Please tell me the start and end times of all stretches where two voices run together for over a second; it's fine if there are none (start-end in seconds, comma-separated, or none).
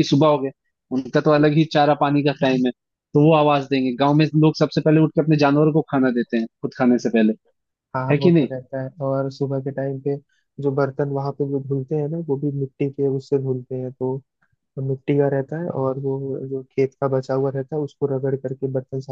none